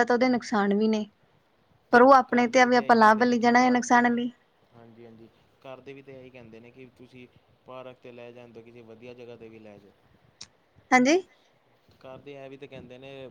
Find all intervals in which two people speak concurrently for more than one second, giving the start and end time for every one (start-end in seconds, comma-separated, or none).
1.9-4.0